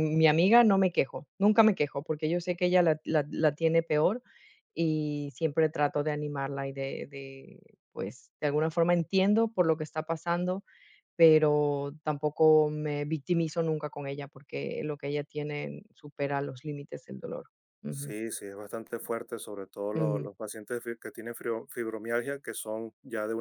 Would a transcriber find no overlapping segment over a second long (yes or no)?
yes